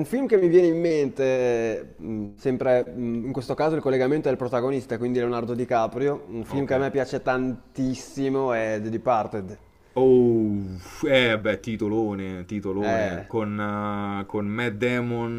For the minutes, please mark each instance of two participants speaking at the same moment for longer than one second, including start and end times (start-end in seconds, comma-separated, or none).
none